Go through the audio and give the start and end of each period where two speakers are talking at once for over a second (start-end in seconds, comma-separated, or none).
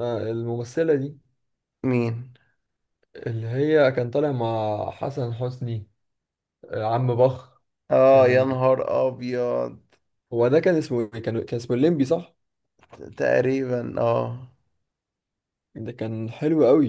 none